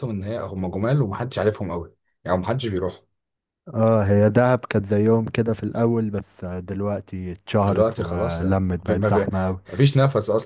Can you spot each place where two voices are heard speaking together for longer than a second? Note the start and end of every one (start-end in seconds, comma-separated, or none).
7.7-9.3